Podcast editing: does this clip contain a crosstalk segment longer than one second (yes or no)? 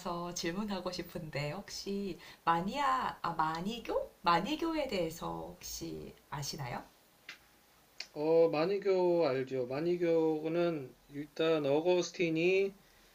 no